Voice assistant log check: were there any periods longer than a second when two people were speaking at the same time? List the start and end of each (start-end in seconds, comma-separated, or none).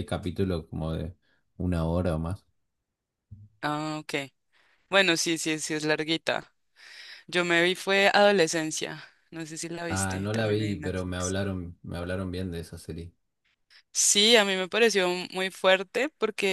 9.9-11.4